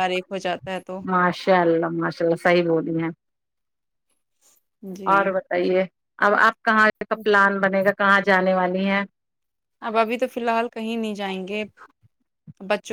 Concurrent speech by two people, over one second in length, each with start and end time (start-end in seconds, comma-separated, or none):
none